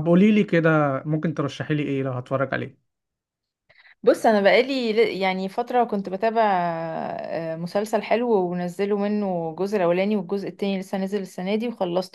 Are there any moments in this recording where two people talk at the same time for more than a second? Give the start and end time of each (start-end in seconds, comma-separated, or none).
none